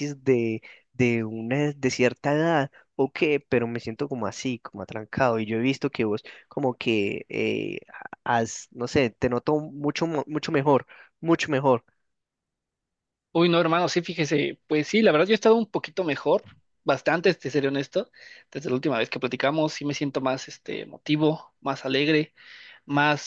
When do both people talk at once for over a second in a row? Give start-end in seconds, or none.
none